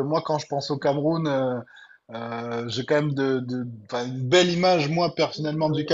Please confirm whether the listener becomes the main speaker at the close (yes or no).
no